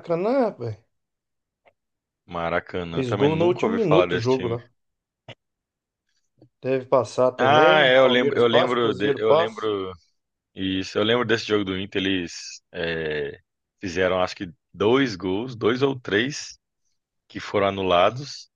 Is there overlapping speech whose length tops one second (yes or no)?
yes